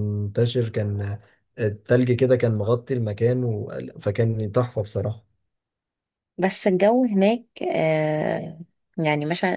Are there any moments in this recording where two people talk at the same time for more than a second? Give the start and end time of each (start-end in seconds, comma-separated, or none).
none